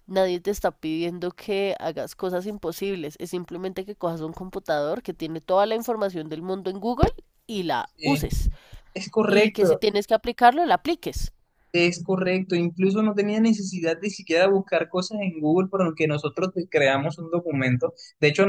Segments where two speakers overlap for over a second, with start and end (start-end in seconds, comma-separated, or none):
none